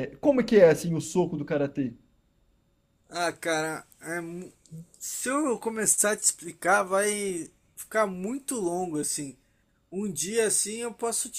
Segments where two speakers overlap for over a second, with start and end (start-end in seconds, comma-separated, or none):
none